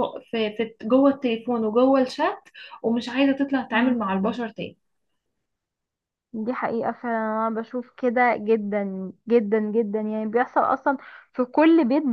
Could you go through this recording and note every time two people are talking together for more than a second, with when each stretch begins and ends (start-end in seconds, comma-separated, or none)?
none